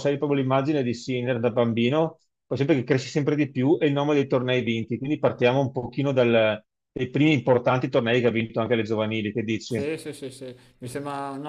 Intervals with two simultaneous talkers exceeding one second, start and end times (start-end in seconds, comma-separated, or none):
none